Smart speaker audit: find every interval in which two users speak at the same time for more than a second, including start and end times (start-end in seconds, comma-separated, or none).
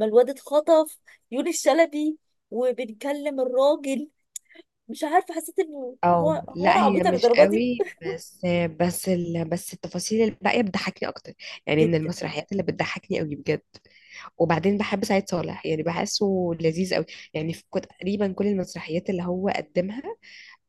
6.0-7.7